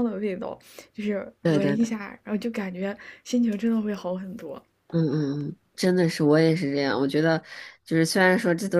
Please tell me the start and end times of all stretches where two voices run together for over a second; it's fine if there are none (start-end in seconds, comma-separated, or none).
none